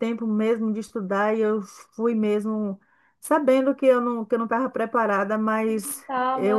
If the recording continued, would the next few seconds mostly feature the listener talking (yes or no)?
no